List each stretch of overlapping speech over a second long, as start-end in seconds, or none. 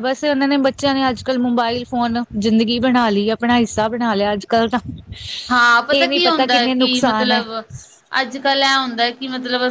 none